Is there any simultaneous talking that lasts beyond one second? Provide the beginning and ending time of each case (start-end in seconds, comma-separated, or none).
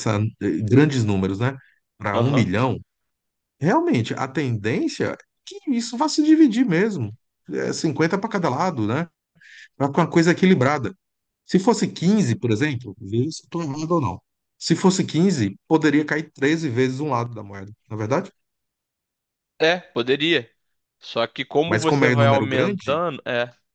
21.7-23.0